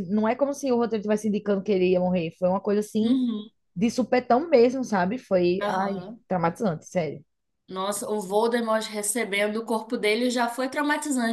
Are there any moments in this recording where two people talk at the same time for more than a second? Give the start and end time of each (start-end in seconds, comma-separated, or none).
none